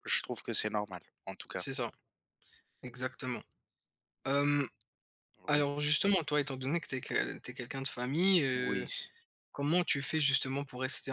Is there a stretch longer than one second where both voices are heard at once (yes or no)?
no